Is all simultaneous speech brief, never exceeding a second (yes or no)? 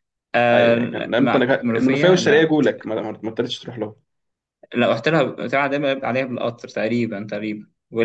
no